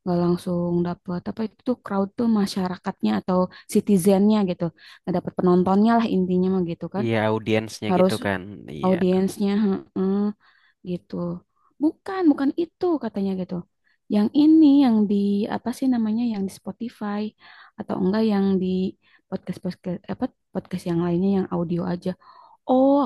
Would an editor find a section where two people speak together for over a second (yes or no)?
no